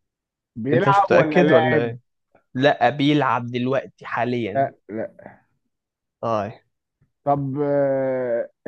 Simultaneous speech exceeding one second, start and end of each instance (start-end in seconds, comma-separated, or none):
0.7-1.9